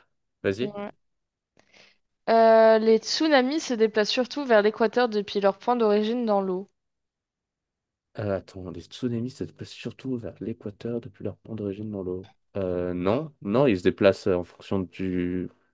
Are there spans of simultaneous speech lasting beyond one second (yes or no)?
no